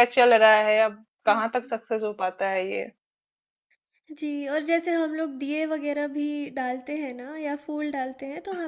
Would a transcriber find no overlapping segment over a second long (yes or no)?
yes